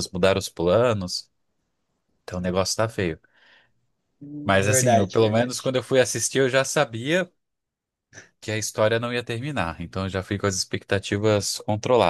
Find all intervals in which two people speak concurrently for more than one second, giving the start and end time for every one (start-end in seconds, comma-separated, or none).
4.4-5.7